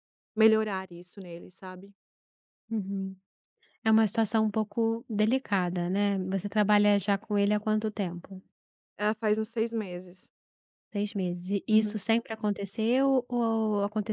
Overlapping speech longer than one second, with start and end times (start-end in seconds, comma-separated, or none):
none